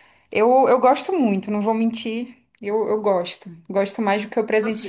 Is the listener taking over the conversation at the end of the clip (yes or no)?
yes